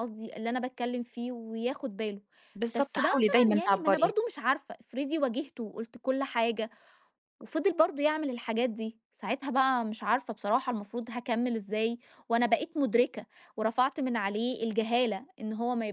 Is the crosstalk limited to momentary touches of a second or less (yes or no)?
no